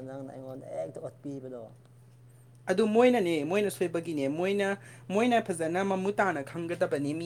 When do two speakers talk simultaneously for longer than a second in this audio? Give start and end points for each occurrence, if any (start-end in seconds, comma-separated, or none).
none